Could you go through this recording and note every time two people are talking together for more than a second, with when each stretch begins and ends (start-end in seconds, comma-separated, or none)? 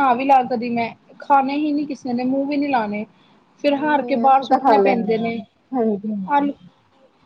3.7-5.3